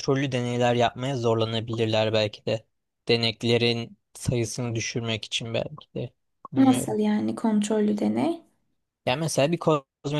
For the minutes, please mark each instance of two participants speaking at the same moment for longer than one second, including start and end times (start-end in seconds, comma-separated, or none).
none